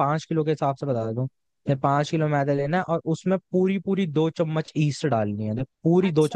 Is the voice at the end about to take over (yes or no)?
yes